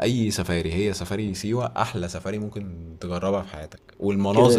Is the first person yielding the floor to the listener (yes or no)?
no